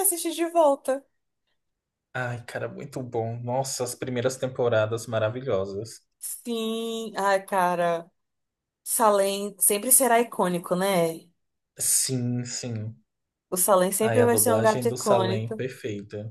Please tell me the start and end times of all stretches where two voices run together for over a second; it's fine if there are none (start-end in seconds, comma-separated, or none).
14.0-15.6